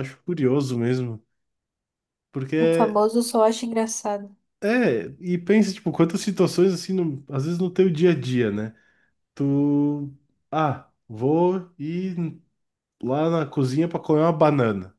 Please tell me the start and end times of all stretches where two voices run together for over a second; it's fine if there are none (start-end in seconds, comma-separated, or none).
none